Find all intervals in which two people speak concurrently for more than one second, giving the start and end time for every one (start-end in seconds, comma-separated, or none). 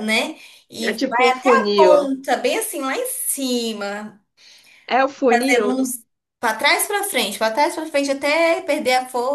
0.8-2.1